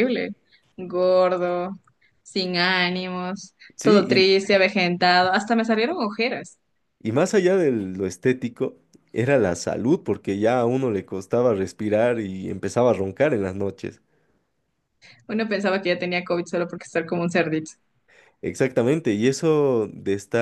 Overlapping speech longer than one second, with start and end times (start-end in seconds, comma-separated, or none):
none